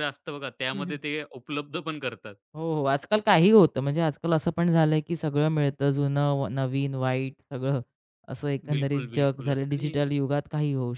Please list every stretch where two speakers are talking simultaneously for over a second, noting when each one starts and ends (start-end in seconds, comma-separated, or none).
8.7-9.9